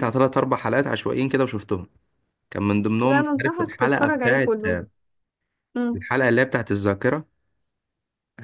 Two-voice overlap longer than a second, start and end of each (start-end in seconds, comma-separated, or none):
3.0-4.6